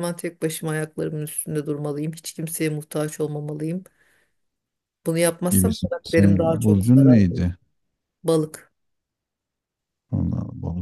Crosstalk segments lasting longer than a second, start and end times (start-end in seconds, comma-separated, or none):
5.5-7.5